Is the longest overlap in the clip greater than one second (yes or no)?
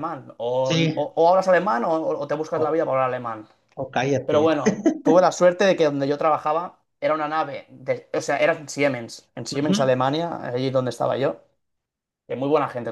no